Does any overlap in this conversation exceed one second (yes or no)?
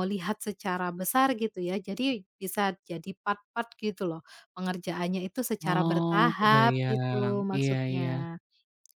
yes